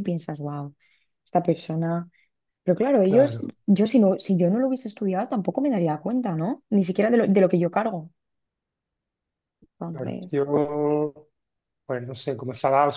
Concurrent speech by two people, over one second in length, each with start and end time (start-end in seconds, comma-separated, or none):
none